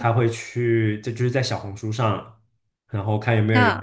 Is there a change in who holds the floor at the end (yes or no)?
no